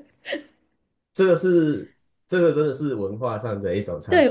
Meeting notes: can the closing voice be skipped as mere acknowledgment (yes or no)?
no